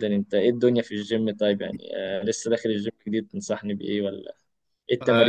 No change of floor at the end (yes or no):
no